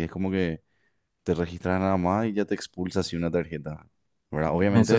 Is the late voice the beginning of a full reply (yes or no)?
yes